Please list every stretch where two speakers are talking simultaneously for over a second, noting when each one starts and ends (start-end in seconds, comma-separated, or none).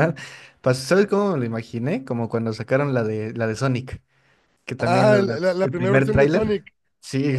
4.8-6.7